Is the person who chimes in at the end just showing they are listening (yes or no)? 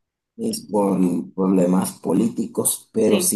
yes